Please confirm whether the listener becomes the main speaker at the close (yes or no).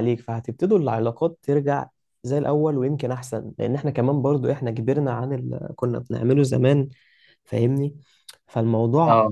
no